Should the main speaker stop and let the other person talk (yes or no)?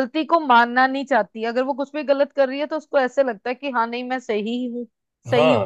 yes